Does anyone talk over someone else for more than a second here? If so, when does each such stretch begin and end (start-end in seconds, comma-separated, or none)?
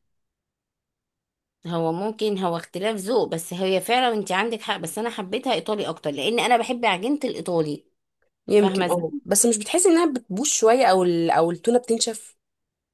none